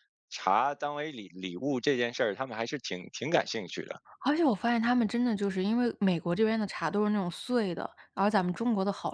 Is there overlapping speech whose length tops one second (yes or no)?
no